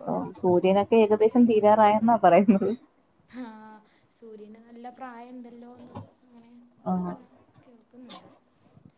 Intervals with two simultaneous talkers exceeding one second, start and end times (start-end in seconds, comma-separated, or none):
none